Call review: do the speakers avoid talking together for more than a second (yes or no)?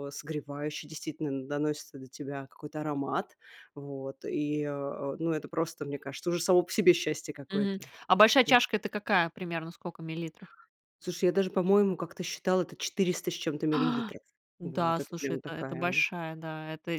no